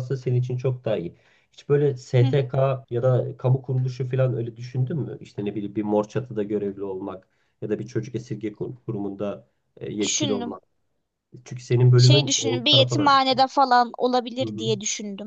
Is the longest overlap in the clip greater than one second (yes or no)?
yes